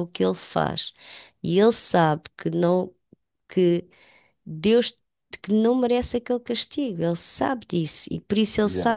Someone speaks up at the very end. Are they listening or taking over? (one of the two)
listening